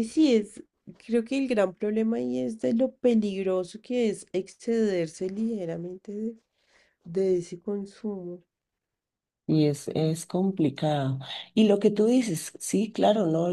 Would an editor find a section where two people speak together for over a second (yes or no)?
no